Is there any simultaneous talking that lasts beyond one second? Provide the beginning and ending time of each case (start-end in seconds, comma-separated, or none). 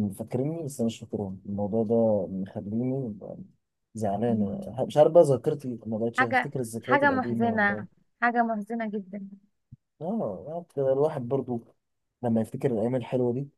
6.2-7.8